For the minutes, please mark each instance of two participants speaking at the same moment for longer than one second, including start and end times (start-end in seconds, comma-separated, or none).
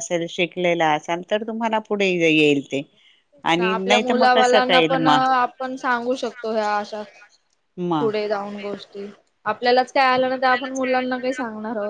3.7-5.6